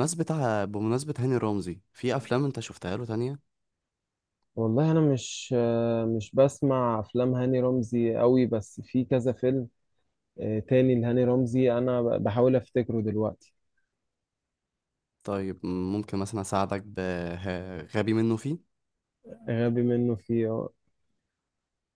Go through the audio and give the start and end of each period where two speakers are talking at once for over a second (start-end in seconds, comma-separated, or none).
none